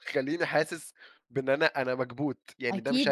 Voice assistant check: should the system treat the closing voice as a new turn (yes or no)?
yes